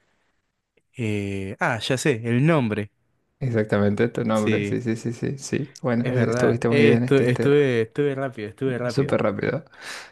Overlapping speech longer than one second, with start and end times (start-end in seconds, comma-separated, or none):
6.0-7.5